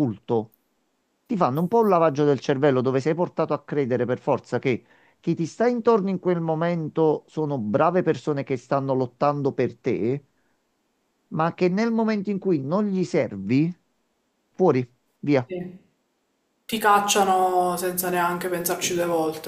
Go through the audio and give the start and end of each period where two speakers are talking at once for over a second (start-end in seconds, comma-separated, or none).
none